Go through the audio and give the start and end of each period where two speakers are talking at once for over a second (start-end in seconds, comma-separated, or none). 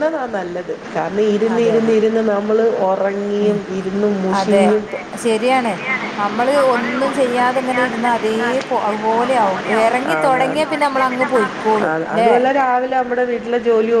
7.6-12.3